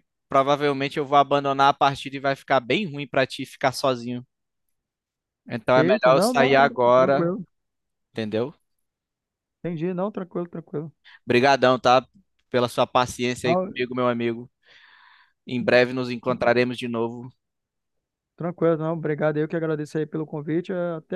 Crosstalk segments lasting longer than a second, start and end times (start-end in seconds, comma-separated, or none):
5.8-7.3